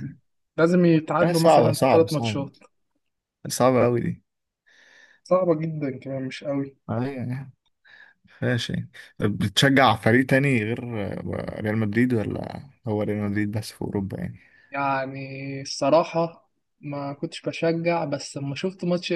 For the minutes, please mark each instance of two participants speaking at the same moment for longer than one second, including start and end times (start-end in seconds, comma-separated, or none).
1.2-2.5